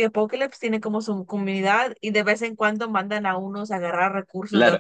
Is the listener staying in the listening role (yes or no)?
no